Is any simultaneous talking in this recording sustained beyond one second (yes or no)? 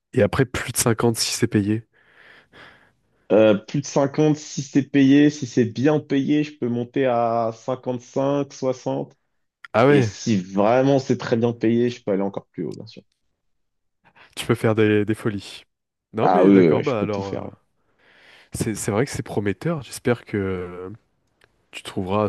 yes